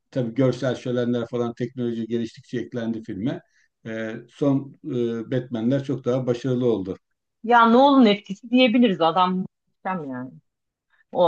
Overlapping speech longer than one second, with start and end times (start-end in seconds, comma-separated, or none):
none